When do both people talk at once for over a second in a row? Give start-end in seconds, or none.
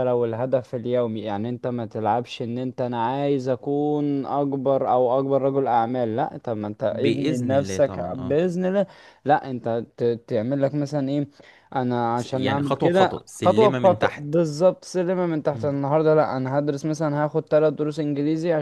6.9-8.4, 12.2-14.3